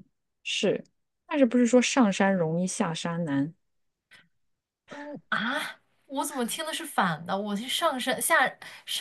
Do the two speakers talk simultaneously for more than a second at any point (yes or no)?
no